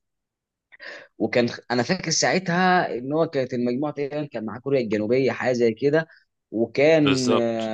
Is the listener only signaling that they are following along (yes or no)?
yes